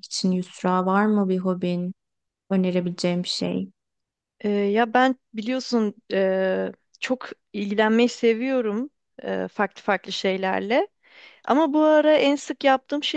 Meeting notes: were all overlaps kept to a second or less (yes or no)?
yes